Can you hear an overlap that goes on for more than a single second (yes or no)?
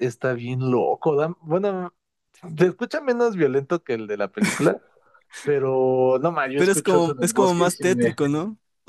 yes